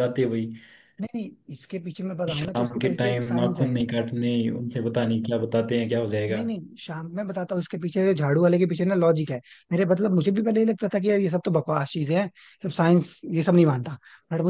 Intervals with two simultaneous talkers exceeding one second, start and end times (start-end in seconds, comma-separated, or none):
2.4-3.7